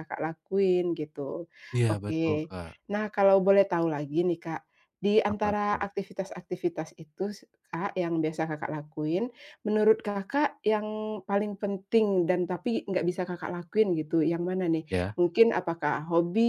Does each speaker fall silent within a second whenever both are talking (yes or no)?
yes